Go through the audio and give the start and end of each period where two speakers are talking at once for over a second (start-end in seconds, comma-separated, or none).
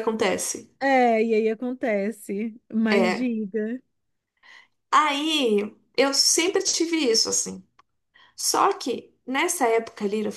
none